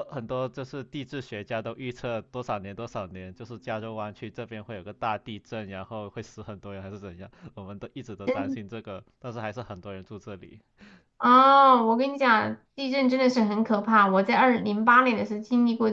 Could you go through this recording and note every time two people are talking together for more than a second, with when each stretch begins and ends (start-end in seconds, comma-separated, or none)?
none